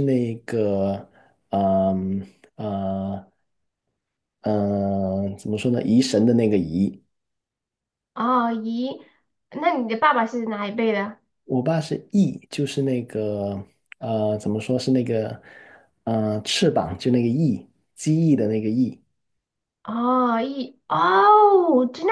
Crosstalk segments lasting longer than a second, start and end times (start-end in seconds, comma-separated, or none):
none